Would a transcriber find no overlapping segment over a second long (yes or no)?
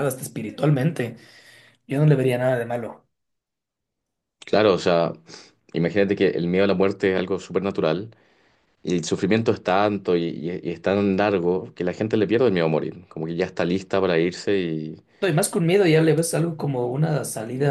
yes